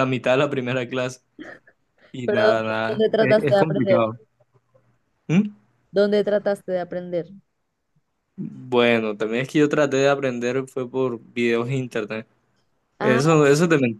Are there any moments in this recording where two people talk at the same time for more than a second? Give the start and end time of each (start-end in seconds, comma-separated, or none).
2.2-4.0